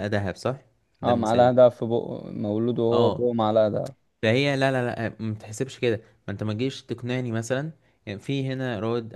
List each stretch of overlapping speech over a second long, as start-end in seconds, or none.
none